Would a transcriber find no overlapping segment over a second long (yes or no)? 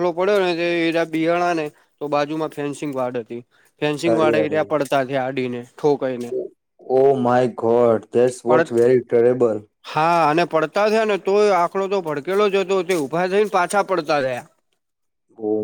yes